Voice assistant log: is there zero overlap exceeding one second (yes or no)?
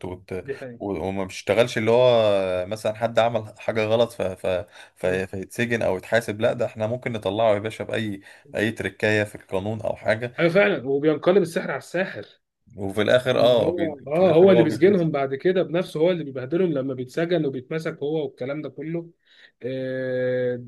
no